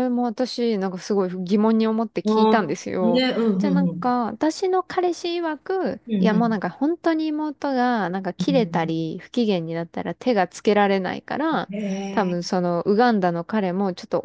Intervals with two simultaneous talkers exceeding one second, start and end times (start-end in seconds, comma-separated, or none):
2.2-4.2